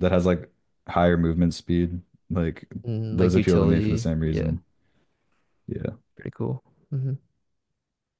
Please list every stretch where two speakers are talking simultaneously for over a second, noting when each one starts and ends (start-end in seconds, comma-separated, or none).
3.1-4.5